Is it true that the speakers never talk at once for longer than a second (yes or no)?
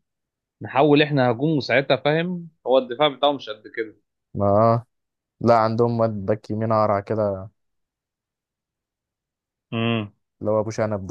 yes